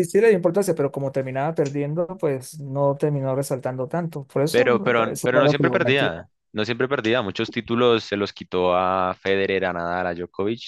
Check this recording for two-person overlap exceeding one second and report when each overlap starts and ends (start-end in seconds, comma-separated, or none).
4.5-6.1